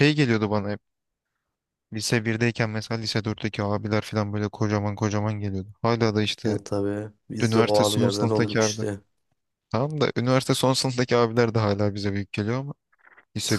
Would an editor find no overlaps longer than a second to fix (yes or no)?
no